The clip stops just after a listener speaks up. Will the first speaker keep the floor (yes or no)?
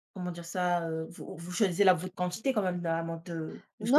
no